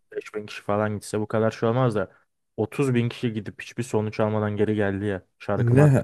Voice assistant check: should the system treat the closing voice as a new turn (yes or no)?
yes